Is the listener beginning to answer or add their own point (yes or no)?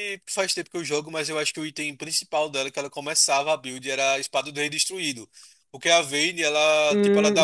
no